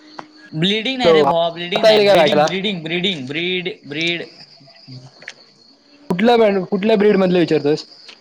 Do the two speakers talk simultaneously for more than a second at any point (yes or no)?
yes